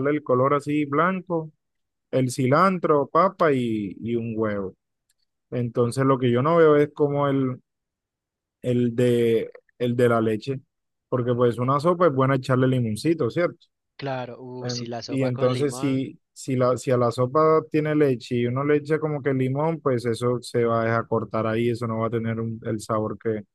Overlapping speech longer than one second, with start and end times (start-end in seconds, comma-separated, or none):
14.6-16.0